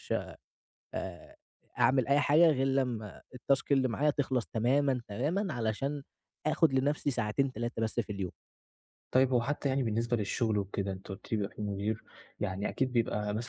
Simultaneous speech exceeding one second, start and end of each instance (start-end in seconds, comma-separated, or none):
none